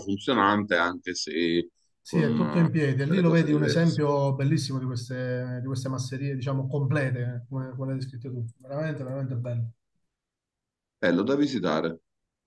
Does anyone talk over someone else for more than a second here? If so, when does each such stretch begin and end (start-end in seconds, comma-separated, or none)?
2.0-4.0